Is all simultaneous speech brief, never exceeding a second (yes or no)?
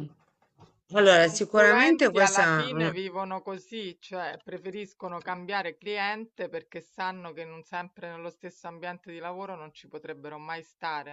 no